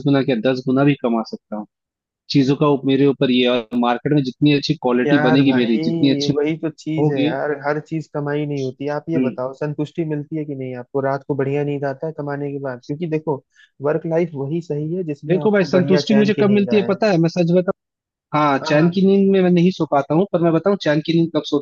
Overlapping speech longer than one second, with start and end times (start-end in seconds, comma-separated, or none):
5.0-6.3, 15.3-16.9